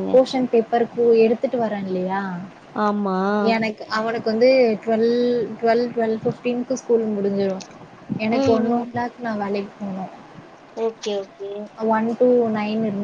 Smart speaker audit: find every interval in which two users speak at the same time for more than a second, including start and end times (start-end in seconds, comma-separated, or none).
none